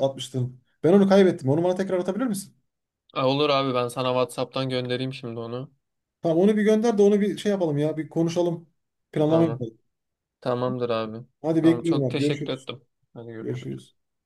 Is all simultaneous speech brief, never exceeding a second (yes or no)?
no